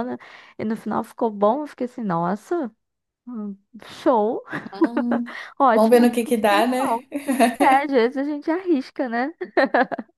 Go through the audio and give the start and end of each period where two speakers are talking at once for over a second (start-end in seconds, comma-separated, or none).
5.7-7.1